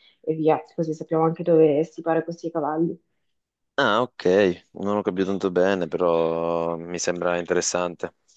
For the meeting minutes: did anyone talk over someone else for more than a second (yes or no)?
no